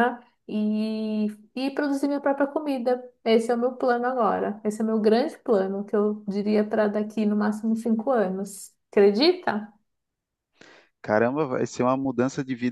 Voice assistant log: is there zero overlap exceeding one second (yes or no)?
yes